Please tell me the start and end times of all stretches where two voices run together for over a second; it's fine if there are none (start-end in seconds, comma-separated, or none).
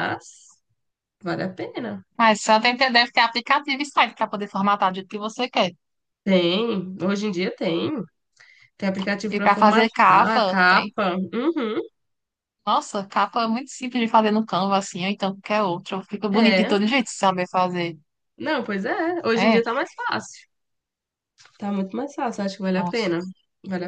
9.3-10.9